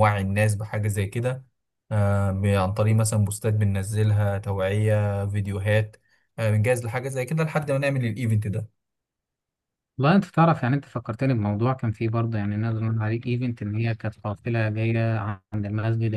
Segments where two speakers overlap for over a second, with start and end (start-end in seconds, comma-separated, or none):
none